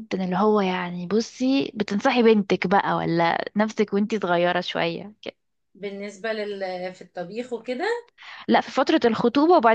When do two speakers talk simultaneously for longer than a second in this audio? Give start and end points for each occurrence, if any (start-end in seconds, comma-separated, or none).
none